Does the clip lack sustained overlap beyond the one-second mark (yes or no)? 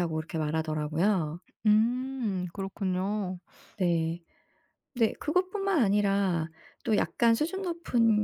yes